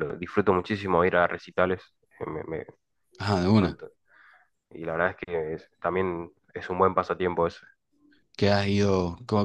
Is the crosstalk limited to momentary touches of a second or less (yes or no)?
yes